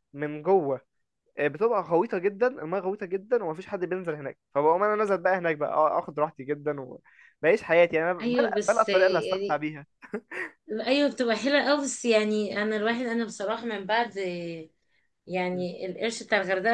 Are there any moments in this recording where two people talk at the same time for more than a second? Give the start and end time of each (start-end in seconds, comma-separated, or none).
8.2-9.6